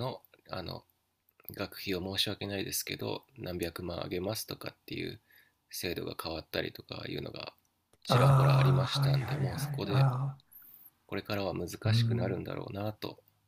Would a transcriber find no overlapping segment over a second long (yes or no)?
no